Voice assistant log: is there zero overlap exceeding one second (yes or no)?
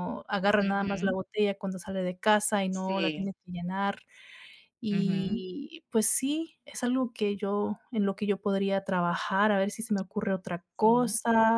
yes